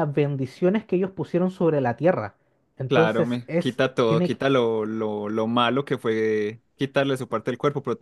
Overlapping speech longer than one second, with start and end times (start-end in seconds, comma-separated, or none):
2.9-4.4